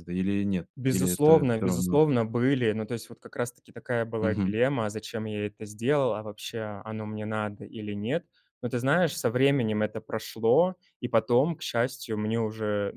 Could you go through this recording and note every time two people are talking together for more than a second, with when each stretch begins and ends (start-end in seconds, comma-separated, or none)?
0.8-2.0